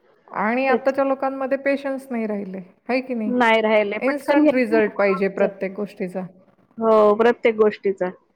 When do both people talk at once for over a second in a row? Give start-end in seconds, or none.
4.1-5.5